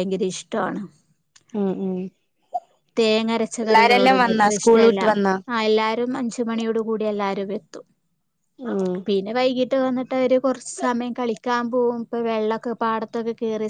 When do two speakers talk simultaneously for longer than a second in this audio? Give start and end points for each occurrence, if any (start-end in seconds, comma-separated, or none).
3.6-5.0